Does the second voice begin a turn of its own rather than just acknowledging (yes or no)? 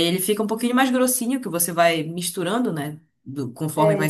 no